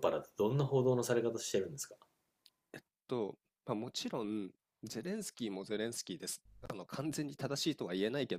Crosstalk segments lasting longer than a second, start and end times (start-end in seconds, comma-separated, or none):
none